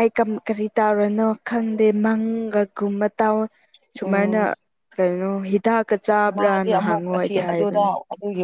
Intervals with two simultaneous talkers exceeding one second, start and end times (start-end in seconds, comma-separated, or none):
6.4-7.9